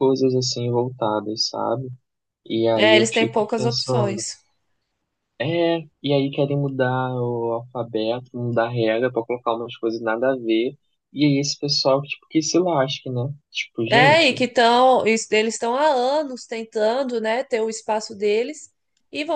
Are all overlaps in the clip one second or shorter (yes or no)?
no